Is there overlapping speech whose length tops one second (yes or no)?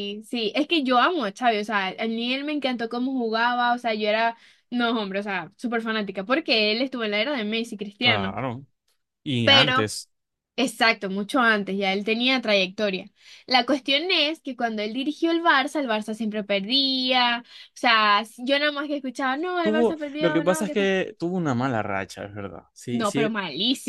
yes